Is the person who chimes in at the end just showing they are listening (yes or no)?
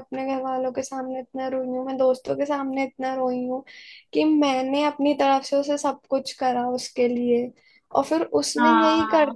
yes